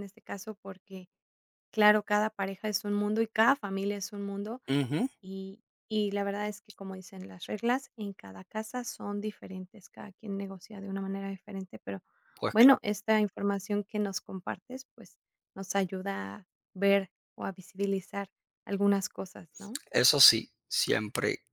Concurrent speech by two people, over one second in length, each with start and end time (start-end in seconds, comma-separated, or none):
none